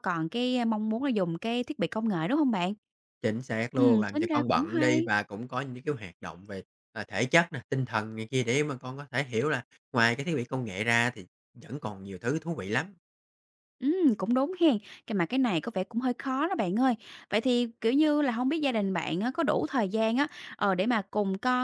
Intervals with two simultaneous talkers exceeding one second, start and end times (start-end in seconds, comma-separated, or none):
3.7-5.1